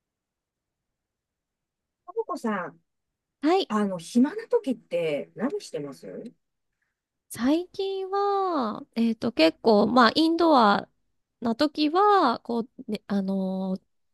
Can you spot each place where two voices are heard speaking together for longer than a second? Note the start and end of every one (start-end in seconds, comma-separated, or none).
none